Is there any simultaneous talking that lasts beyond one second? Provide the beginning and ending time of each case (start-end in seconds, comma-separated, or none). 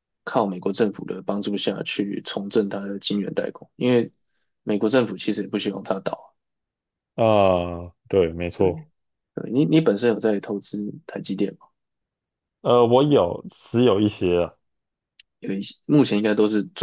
none